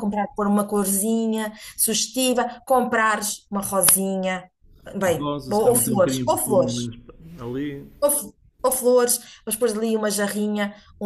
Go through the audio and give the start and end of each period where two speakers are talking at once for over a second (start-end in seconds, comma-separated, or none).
5.0-6.9